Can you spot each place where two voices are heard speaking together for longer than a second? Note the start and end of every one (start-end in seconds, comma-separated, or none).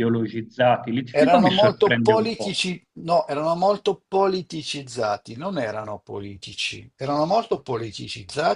1.1-2.6